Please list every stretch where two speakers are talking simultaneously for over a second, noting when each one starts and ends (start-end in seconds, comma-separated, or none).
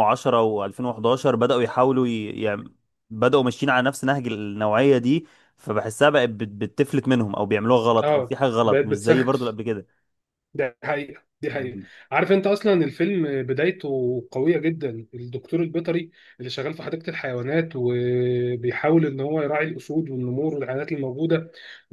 8.0-9.6